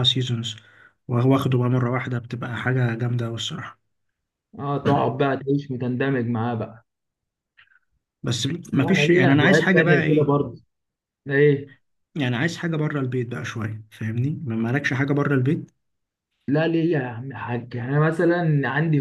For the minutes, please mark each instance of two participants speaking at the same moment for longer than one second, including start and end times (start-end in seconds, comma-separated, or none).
8.7-10.5